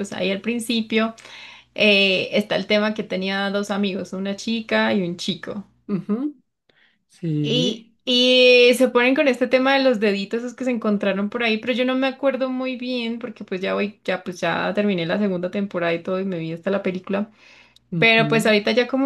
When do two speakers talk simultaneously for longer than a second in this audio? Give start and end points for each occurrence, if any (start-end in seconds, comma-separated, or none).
none